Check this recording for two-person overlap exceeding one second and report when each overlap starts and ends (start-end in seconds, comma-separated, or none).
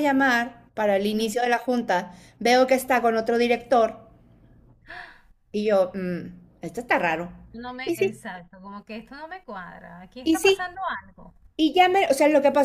none